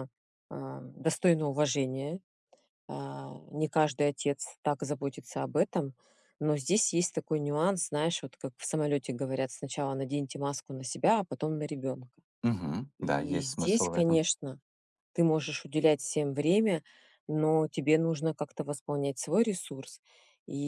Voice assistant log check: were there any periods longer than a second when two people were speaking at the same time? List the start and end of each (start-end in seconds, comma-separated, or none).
13.0-14.2